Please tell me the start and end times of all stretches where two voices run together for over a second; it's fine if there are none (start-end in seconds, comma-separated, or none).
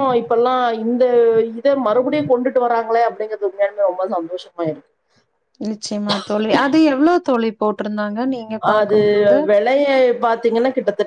none